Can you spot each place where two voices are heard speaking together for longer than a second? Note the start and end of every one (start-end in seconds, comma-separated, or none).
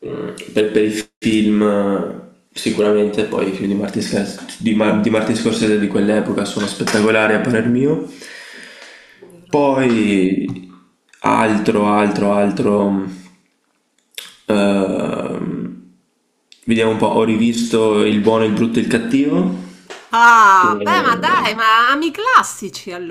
none